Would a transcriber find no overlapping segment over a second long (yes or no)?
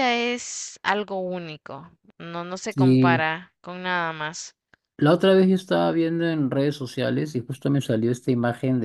yes